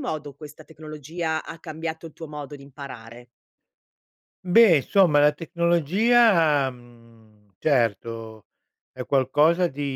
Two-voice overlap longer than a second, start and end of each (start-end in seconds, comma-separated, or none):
none